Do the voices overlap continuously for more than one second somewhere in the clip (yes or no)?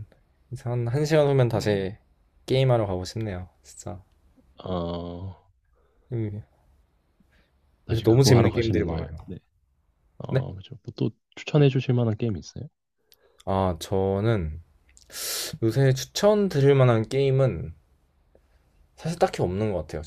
yes